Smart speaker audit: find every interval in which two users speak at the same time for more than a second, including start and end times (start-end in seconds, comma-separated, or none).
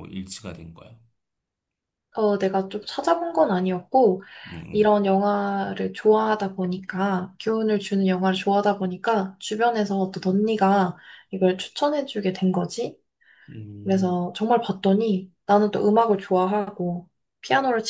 none